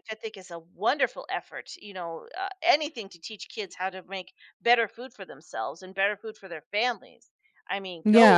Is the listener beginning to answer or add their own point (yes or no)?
yes